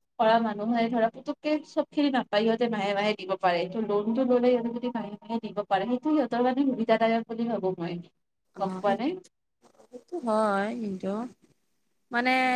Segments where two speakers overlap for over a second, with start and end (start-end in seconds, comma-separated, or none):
none